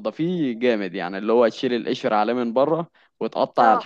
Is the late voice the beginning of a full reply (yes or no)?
no